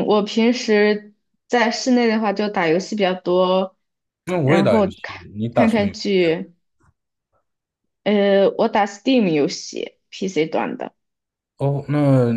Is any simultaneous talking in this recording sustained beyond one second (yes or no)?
yes